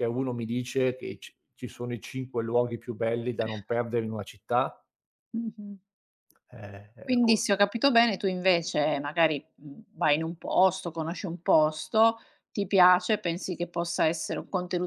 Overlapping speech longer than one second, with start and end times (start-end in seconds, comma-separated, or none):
none